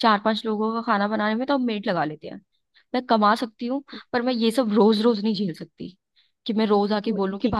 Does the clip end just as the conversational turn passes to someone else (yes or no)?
yes